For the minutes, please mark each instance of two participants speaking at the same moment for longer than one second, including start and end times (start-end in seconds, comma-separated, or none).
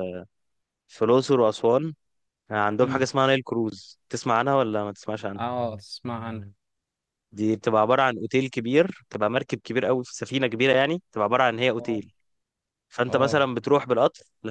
none